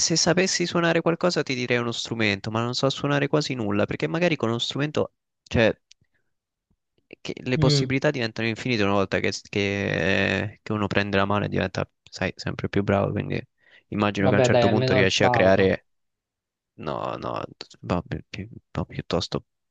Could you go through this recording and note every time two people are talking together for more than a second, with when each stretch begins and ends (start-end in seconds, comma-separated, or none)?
14.2-15.7